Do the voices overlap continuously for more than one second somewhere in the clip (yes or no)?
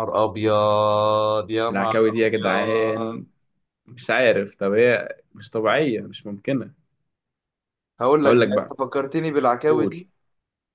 yes